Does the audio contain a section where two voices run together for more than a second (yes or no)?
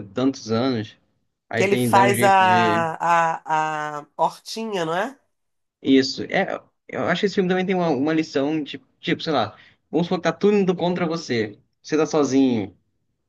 yes